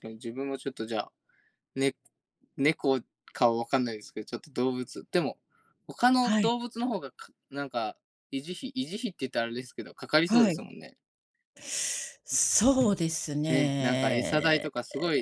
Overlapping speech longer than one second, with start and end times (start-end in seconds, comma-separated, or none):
13.5-14.7